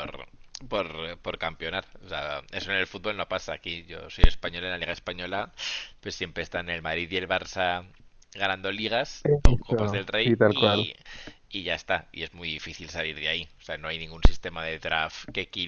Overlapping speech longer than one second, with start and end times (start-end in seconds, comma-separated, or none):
9.2-10.9